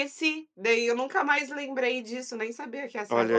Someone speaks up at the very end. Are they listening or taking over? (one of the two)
taking over